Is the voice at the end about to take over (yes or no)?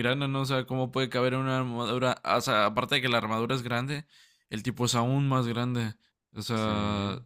no